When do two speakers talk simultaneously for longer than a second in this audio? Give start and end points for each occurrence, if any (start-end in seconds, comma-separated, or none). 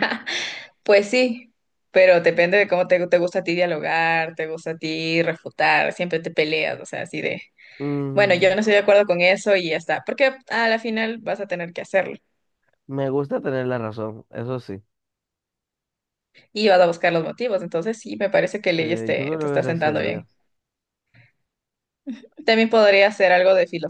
18.8-20.3